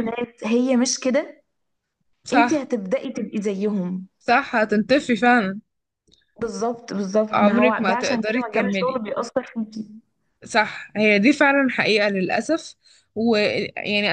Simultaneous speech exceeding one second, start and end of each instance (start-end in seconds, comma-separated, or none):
7.3-9.0